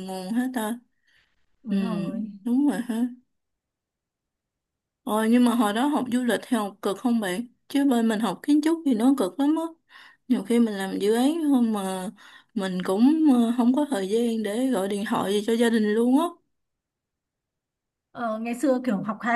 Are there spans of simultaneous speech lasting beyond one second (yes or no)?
no